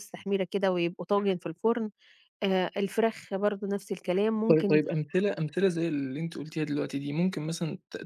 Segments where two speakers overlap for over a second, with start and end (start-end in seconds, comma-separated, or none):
none